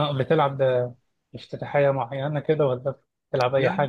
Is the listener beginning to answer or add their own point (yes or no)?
yes